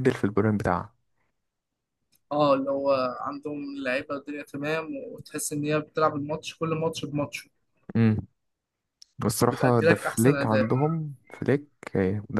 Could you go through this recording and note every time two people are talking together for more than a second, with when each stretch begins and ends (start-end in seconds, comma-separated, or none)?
9.4-10.7